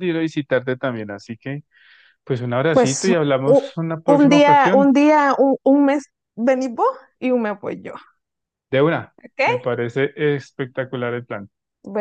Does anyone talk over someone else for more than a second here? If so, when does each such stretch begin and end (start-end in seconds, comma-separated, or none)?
2.7-4.9